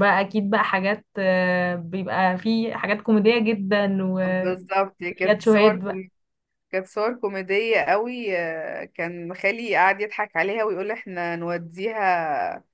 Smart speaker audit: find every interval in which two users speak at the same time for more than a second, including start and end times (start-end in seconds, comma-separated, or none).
4.3-6.0